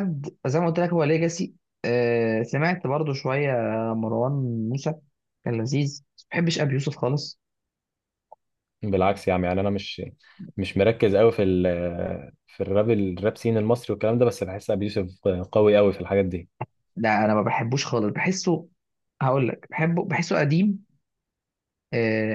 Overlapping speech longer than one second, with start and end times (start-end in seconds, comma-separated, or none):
none